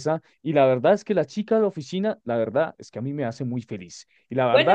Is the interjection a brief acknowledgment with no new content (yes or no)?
no